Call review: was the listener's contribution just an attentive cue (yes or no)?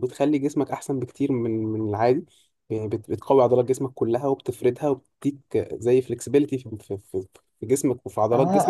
no